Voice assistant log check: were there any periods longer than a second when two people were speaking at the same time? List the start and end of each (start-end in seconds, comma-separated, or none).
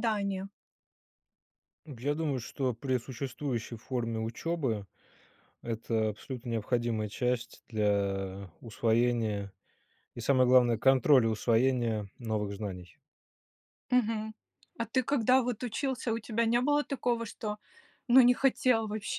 none